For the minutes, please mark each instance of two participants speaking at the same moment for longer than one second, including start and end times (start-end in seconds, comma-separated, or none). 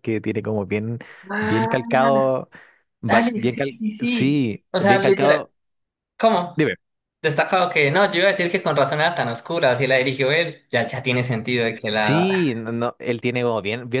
3.1-5.4